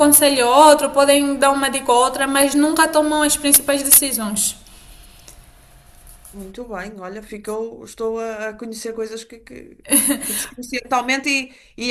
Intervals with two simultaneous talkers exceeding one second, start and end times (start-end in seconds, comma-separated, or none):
none